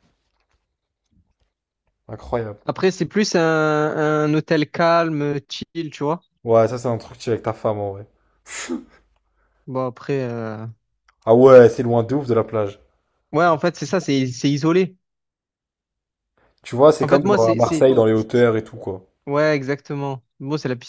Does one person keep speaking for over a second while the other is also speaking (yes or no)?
yes